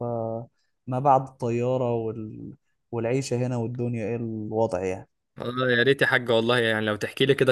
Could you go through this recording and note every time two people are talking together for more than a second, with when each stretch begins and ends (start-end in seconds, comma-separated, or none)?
none